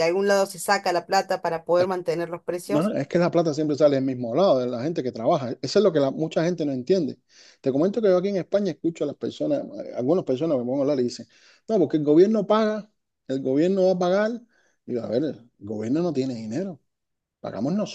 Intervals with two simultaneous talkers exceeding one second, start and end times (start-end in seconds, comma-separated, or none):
none